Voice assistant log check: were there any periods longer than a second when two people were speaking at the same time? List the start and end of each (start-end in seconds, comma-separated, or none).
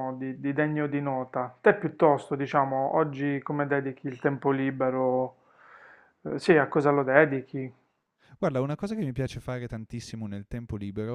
none